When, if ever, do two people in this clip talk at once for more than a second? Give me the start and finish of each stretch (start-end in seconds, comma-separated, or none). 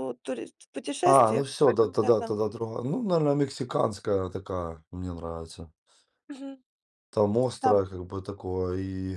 1.0-2.4